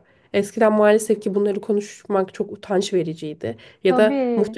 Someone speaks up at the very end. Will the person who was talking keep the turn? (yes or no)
yes